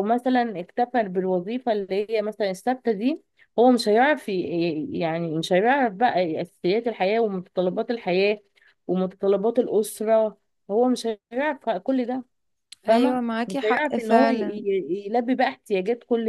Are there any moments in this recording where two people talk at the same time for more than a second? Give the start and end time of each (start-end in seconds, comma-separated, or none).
12.9-14.6